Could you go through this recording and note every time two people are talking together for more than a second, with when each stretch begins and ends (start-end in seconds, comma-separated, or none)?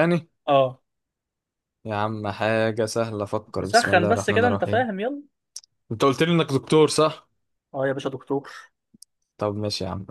3.6-4.9